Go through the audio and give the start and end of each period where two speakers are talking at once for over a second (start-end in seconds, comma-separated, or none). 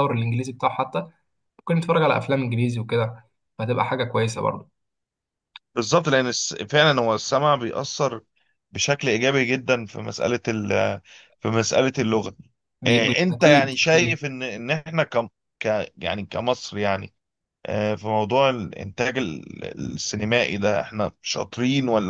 12.9-14.2